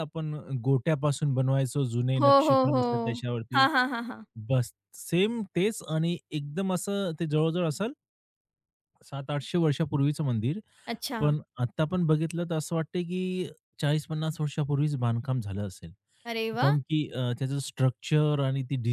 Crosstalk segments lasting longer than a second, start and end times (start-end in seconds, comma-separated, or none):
none